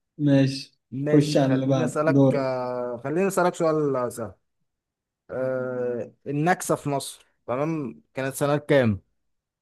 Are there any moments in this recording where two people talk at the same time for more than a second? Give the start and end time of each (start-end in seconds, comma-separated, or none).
1.1-2.5